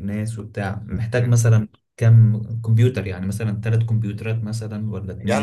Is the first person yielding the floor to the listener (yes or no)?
yes